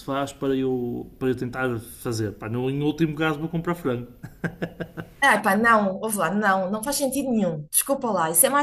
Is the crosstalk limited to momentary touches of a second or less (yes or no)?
yes